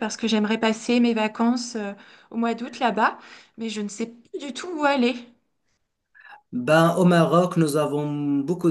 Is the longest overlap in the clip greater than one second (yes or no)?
no